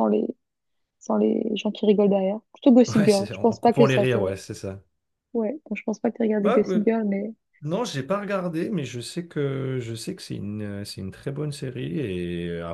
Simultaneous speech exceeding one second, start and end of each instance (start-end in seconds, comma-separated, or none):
2.9-4.2